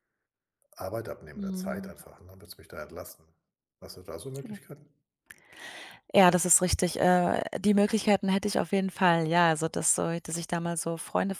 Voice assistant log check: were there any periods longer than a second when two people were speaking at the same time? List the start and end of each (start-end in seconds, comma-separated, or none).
none